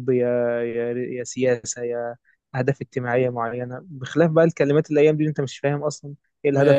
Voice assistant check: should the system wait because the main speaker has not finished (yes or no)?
no